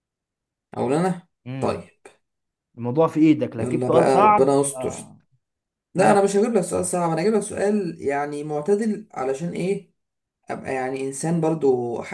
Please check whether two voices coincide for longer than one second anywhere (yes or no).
yes